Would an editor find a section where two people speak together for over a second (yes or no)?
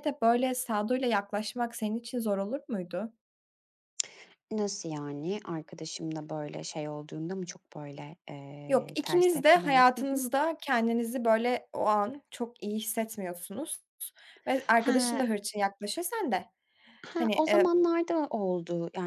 yes